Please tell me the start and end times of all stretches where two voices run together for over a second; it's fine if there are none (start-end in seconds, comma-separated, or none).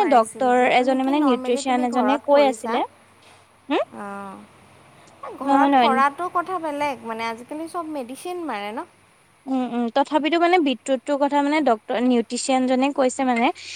0.8-2.8